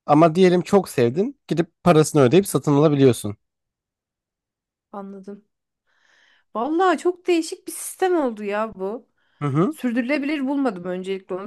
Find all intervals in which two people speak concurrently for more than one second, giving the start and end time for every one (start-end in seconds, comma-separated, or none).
none